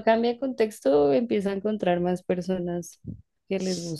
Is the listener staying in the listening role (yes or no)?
no